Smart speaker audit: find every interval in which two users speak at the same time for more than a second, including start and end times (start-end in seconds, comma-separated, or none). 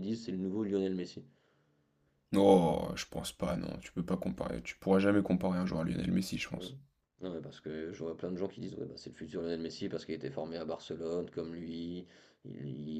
none